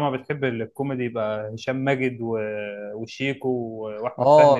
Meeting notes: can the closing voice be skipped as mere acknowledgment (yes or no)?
no